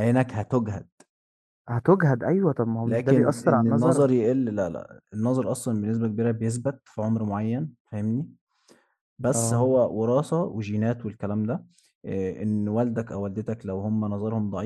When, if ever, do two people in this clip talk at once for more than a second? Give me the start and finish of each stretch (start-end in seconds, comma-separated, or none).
2.8-4.0